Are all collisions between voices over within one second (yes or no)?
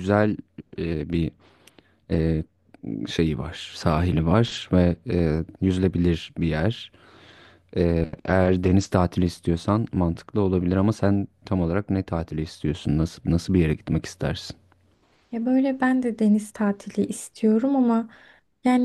yes